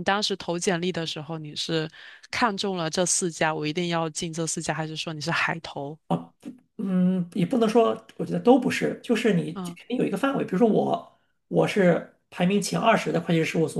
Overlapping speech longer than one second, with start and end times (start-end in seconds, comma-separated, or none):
none